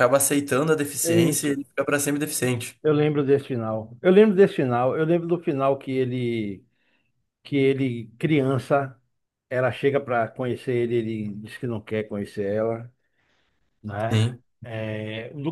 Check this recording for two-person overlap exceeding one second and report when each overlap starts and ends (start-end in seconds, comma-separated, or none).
none